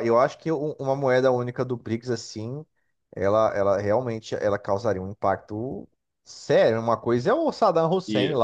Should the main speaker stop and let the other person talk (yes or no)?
no